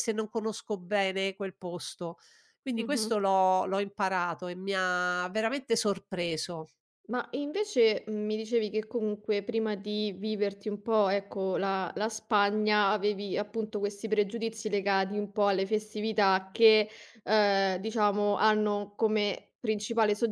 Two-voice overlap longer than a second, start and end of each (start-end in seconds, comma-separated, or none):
none